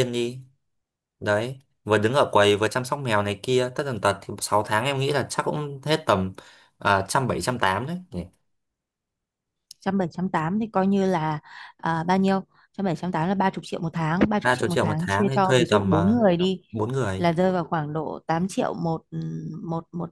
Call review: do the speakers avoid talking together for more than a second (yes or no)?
no